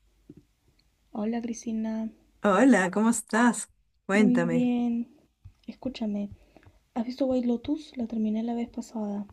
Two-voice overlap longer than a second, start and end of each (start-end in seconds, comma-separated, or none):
none